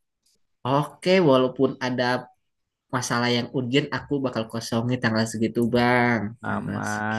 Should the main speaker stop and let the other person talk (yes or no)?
yes